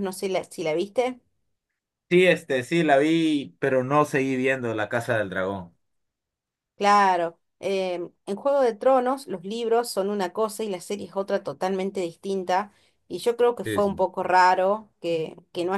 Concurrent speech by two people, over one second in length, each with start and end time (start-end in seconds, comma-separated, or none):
none